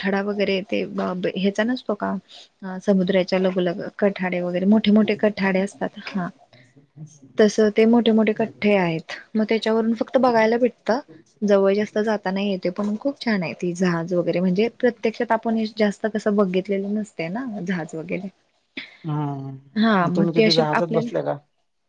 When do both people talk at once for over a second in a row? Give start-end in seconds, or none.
19.8-21.4